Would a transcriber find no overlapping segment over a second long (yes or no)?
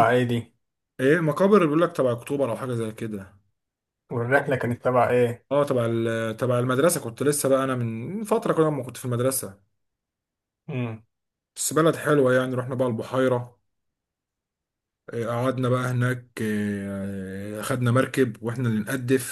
yes